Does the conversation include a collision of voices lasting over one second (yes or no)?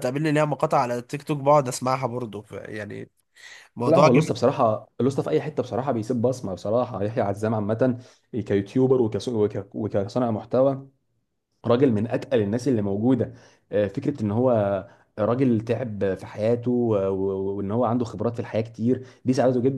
no